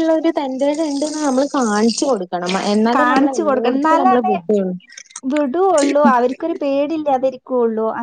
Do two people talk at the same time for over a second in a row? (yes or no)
yes